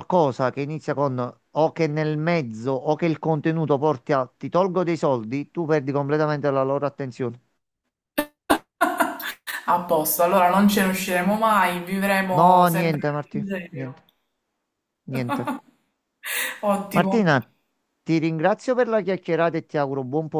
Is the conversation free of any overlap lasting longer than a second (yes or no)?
no